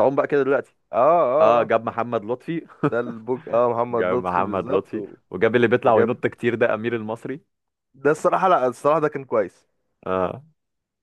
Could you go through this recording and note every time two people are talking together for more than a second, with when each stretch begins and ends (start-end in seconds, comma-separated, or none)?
3.9-5.2